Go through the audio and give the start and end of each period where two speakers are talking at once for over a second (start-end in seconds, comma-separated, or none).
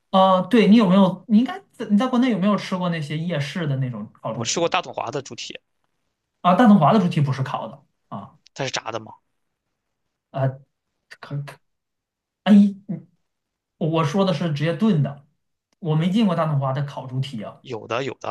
none